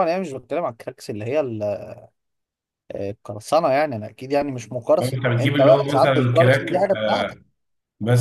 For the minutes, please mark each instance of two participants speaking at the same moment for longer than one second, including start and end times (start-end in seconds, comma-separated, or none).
5.0-6.9